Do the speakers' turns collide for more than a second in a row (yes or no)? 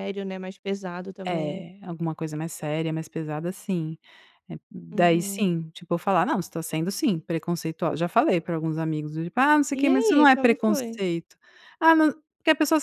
yes